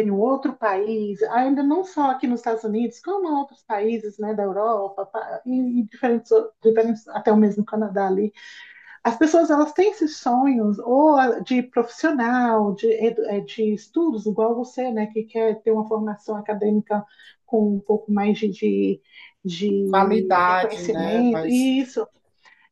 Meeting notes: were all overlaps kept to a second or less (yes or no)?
no